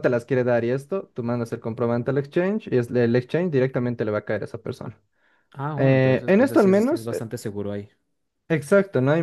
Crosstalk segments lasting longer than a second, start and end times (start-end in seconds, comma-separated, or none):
5.8-7.1